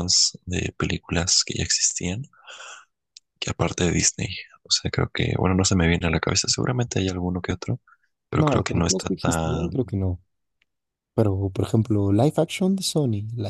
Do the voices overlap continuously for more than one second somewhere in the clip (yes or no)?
yes